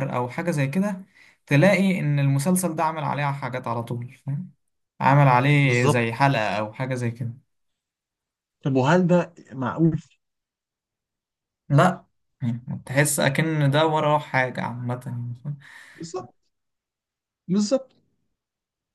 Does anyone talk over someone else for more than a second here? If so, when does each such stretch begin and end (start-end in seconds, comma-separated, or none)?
none